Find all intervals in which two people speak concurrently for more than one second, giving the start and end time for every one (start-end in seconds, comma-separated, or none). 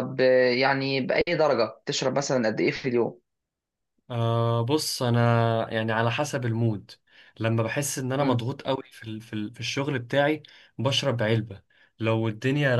none